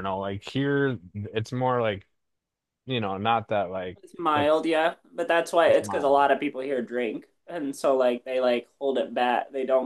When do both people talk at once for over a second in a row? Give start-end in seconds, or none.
none